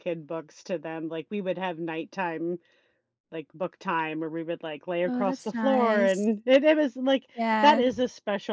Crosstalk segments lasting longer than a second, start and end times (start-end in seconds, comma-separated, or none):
5.0-6.3